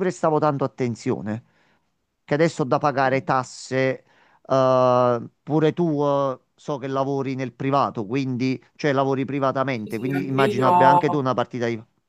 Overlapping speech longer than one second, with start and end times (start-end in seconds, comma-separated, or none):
9.7-11.4